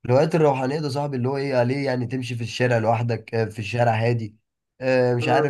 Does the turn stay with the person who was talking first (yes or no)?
yes